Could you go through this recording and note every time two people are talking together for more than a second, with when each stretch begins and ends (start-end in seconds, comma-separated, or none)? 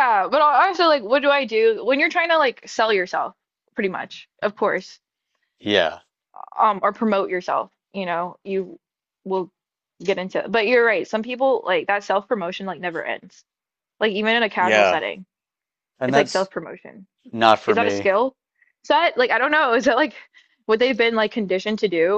none